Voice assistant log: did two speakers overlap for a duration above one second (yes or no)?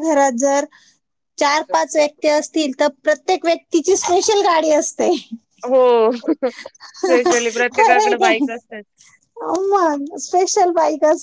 yes